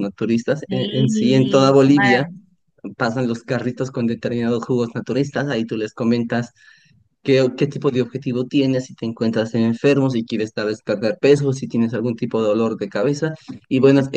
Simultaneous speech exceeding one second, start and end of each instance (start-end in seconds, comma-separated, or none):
0.7-2.3